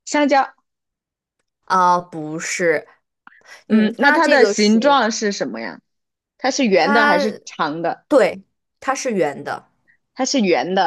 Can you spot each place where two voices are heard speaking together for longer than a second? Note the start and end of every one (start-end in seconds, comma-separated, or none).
3.7-5.0